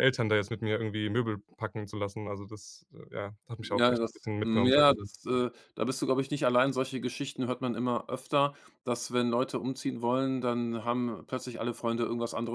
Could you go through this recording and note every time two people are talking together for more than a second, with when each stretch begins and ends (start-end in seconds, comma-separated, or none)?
3.6-5.1